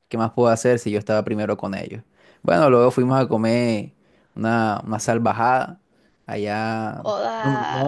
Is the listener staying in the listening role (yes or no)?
yes